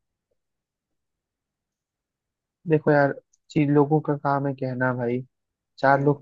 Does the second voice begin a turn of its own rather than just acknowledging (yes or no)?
no